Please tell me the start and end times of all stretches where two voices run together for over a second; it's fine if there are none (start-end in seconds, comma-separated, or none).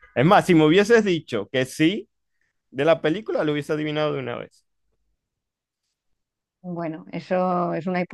none